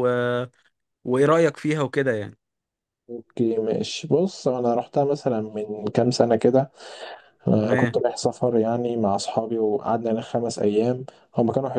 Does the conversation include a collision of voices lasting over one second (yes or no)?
no